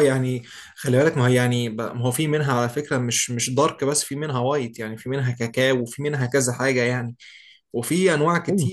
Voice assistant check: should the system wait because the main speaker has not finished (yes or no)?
yes